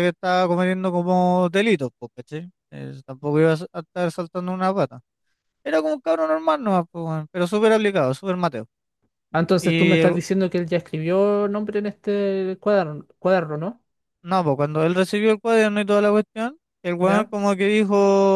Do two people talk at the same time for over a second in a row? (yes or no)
no